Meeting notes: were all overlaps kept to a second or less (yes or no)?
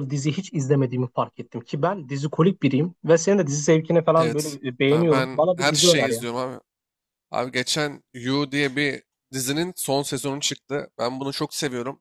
no